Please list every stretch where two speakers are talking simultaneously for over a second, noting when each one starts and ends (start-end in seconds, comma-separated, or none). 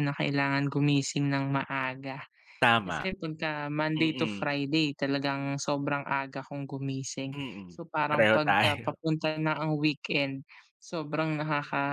7.3-9.0